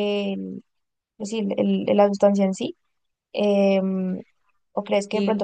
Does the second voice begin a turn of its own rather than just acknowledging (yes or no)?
no